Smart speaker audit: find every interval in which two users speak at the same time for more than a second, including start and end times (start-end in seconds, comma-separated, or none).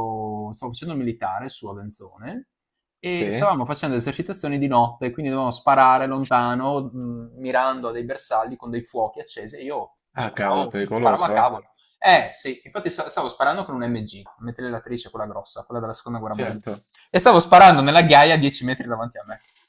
10.2-11.4